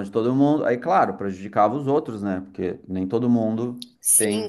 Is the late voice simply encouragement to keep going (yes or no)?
no